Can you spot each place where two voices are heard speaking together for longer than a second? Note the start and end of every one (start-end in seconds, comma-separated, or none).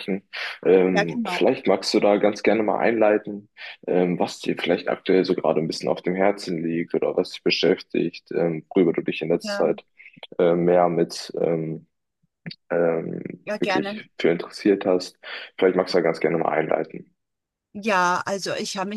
none